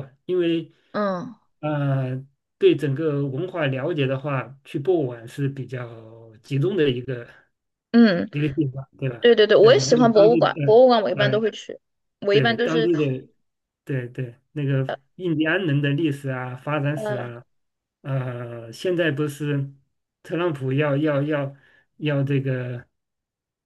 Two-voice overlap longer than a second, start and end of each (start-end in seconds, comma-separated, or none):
9.2-11.4